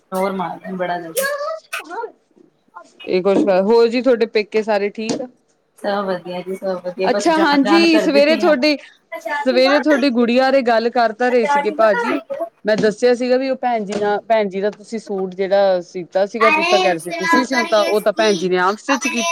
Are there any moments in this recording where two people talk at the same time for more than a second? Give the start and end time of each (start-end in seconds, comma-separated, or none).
7.1-8.6